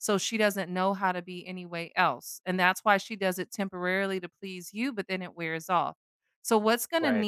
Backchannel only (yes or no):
yes